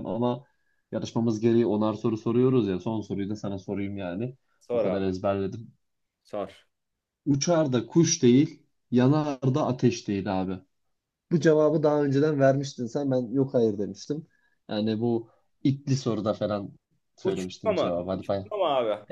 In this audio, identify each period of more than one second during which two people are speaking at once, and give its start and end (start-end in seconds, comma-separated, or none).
17.2-18.5